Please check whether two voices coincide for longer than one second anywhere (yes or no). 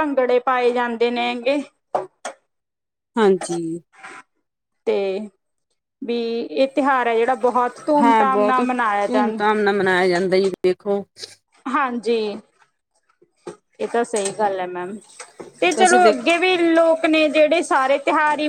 yes